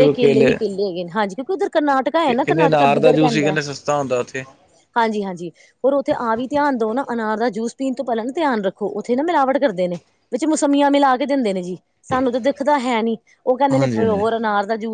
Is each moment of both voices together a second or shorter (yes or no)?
no